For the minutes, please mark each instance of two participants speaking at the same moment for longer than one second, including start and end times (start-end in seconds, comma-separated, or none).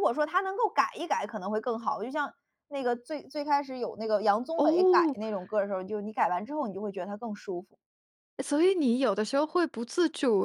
none